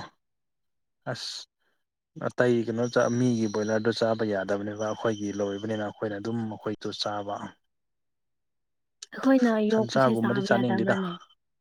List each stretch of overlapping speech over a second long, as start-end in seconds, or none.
9.7-11.0